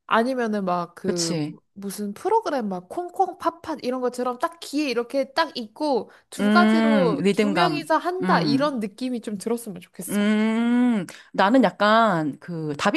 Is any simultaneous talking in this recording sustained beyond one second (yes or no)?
yes